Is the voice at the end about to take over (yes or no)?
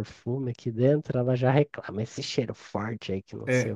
yes